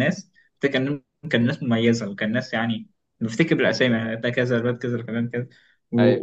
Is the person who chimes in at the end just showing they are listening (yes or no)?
yes